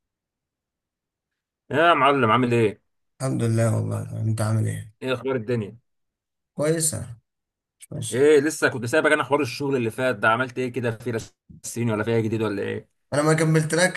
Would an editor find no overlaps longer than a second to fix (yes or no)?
yes